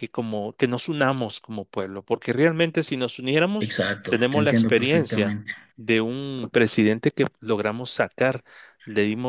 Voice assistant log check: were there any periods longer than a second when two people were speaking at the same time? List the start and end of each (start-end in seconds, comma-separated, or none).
3.6-5.4